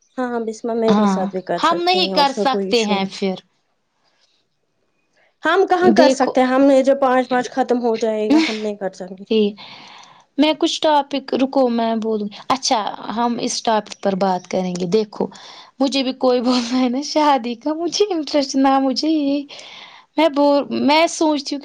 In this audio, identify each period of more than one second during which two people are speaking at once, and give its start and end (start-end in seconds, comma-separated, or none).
0.9-3.2